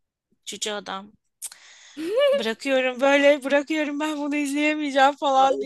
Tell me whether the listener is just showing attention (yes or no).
no